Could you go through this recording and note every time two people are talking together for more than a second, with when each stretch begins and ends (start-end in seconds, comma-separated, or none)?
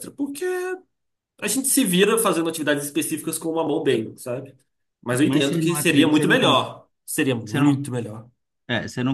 5.2-6.6